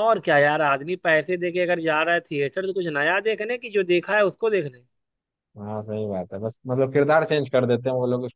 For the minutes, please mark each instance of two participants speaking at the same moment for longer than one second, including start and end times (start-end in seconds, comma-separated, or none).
none